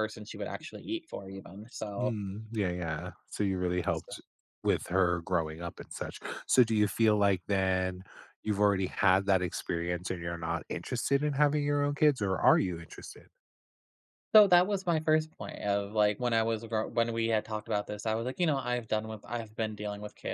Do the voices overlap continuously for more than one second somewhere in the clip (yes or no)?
no